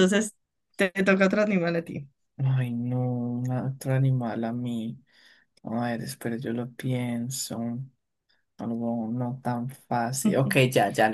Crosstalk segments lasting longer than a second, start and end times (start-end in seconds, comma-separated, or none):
none